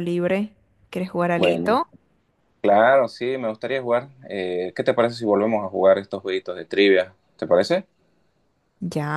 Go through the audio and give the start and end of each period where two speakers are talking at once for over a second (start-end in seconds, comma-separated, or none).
none